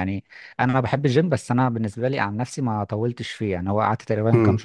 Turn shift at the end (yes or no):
no